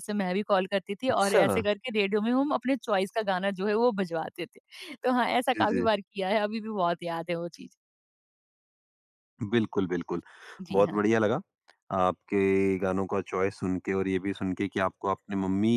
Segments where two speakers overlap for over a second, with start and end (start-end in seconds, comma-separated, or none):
none